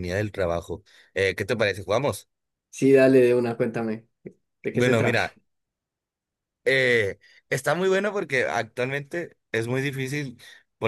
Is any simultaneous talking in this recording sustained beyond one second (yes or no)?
no